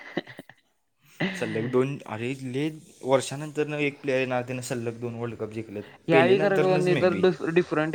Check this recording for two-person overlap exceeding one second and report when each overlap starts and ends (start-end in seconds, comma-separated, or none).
none